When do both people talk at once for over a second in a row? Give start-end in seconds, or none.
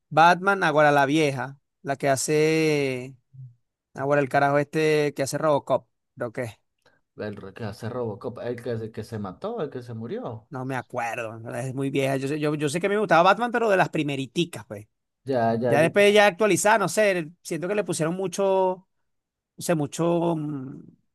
none